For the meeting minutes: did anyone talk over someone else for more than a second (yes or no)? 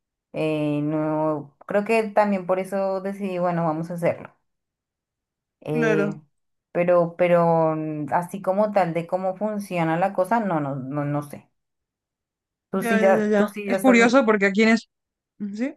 yes